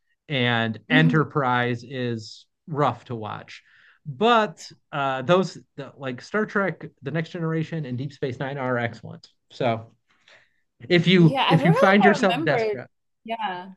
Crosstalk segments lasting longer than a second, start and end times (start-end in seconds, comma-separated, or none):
11.2-12.8